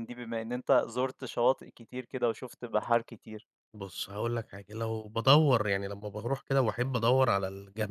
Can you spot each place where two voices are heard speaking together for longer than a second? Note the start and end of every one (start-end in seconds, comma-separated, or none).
none